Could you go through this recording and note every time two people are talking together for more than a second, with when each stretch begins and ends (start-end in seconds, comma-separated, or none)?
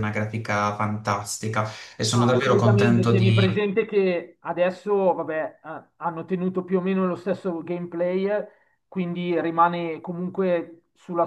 2.1-3.6